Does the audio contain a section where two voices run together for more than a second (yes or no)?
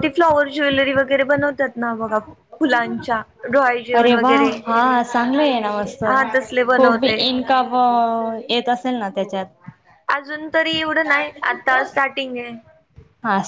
no